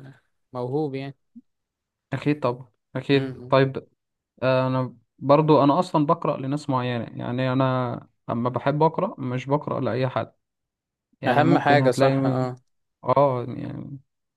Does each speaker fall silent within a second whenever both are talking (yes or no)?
no